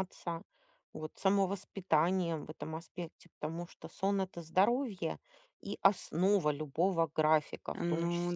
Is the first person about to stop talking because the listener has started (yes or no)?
no